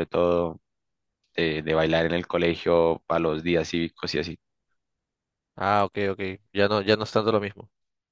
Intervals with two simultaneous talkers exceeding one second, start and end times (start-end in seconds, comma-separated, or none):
none